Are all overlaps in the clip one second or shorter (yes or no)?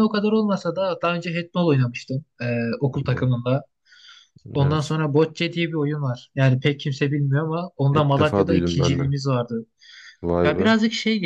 no